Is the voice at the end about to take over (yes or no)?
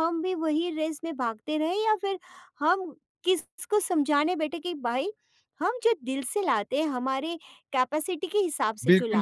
yes